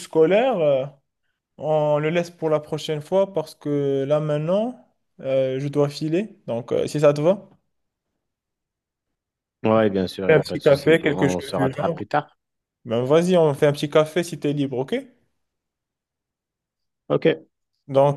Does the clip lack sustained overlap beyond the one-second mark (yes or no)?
no